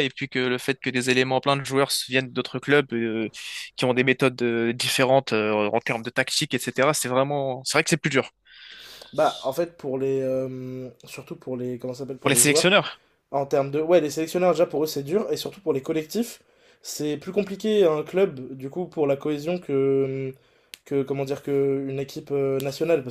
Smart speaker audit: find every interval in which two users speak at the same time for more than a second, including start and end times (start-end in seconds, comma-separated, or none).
none